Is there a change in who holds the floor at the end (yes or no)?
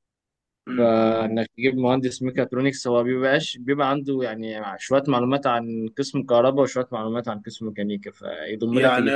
yes